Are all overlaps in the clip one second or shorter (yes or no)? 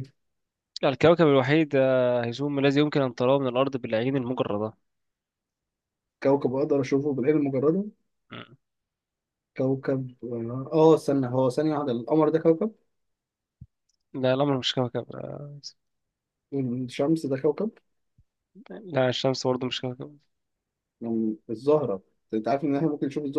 yes